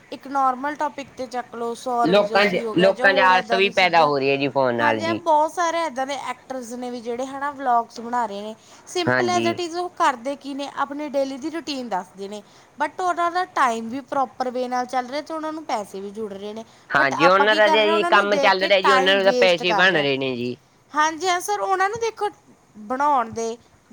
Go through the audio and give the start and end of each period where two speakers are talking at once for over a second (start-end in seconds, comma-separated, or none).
2.1-4.1, 17.0-20.1